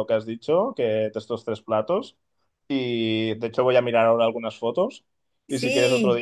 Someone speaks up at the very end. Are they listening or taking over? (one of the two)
listening